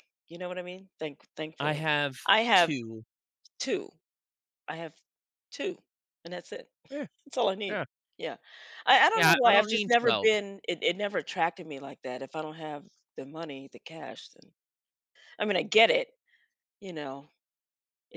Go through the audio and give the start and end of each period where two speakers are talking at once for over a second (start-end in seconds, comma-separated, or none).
9.1-10.4